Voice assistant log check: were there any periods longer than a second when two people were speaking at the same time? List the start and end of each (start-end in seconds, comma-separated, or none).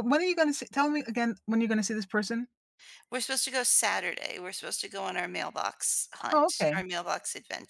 none